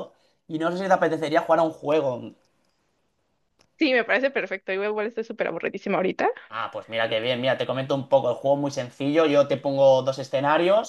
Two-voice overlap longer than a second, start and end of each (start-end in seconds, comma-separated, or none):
none